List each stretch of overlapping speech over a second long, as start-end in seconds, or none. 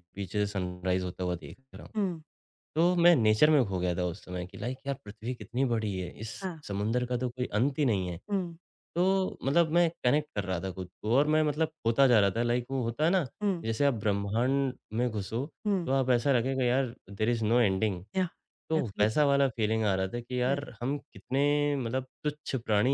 none